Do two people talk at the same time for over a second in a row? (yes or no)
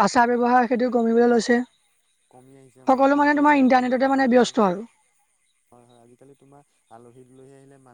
yes